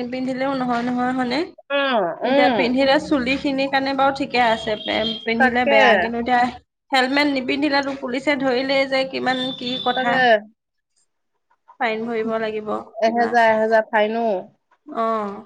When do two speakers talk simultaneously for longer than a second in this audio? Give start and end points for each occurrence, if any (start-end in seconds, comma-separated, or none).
none